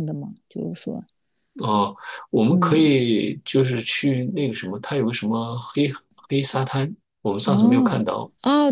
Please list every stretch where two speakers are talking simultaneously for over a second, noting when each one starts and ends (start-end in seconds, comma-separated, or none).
none